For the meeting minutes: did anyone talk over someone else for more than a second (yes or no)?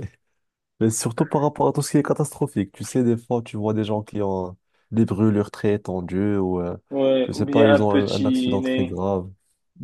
yes